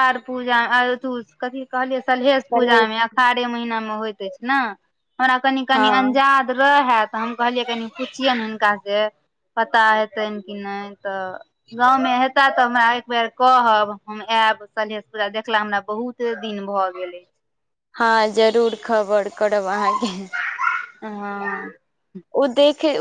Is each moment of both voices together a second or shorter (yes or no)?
yes